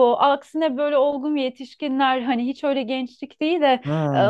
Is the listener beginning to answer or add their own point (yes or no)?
no